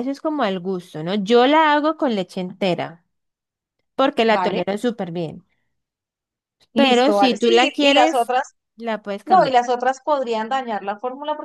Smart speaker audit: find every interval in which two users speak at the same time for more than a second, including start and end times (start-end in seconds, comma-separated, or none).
6.8-8.3